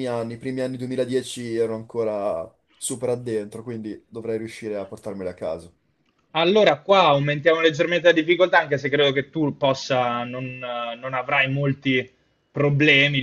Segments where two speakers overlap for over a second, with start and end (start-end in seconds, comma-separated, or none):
none